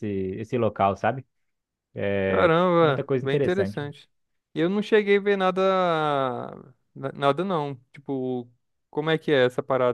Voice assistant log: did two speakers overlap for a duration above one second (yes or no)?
yes